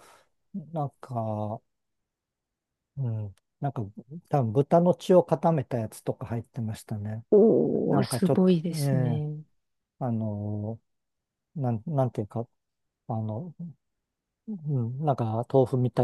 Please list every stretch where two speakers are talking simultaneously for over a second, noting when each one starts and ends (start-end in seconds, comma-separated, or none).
7.8-9.2